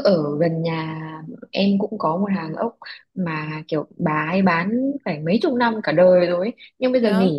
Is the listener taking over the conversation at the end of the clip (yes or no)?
no